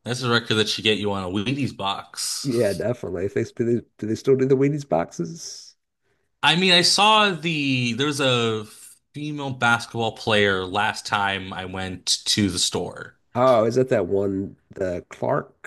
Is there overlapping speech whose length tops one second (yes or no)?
no